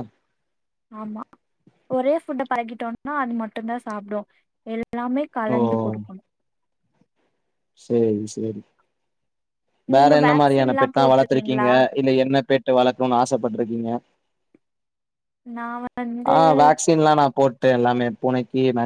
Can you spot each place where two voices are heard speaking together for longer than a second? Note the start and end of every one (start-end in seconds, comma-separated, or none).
10.0-11.7